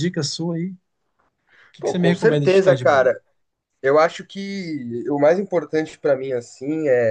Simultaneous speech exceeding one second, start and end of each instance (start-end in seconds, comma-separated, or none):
1.8-3.1